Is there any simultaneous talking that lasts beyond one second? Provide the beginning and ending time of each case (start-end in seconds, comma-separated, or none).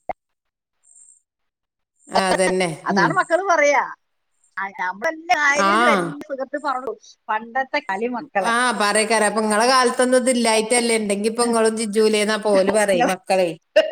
none